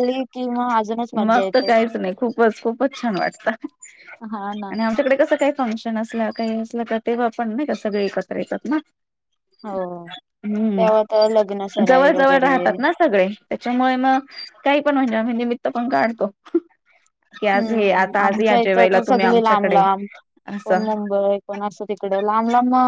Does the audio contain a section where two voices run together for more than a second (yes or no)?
yes